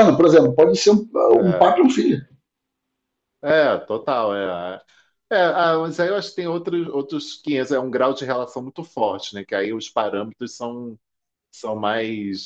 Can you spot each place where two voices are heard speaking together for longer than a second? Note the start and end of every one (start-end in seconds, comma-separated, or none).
none